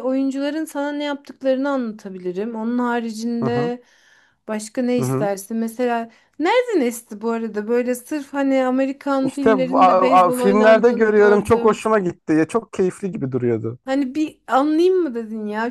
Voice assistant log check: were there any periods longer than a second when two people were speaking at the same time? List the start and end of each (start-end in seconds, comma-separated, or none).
9.2-11.8